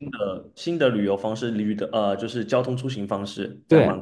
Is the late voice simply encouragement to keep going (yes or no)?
no